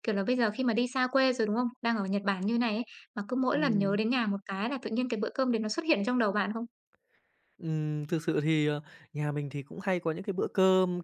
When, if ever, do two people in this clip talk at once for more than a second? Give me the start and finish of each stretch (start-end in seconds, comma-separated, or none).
none